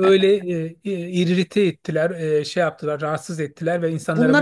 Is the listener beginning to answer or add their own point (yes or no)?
yes